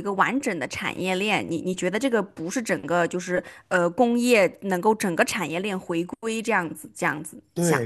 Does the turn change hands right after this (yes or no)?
yes